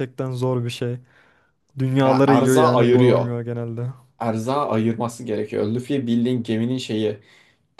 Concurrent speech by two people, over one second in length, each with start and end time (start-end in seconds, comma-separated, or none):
2.0-3.3